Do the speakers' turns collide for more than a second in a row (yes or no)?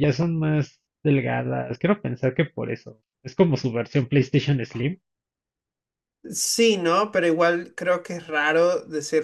no